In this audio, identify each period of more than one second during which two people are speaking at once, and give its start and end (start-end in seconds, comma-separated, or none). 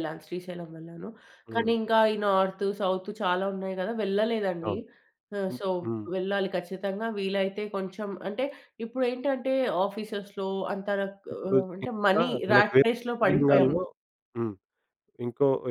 11.3-13.7